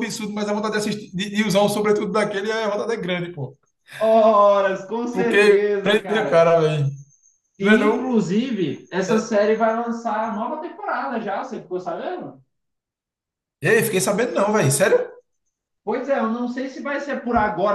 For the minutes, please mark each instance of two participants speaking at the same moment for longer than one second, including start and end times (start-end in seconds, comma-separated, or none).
5.1-6.5